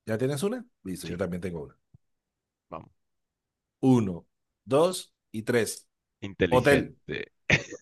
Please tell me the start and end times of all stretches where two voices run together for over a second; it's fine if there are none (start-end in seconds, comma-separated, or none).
none